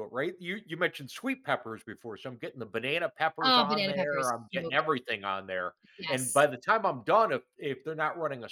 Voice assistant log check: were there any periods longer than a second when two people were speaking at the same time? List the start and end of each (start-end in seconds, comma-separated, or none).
3.4-4.9